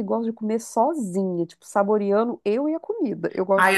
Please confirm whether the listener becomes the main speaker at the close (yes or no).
yes